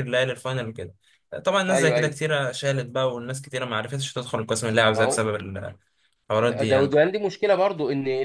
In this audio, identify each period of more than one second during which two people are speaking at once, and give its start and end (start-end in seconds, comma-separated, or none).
none